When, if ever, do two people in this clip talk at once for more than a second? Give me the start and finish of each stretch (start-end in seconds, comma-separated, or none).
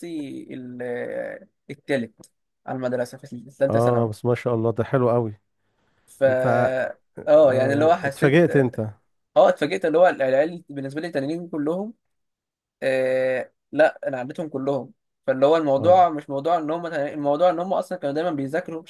7.4-8.7